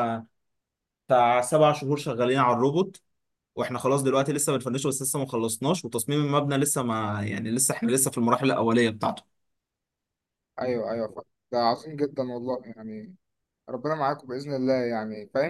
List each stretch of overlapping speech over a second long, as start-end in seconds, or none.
none